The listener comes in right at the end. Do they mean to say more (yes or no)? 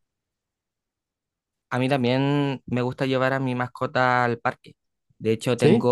no